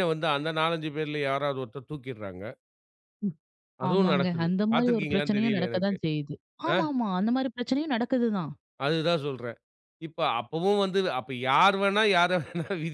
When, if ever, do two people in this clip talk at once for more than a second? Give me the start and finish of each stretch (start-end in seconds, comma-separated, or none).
3.9-6.0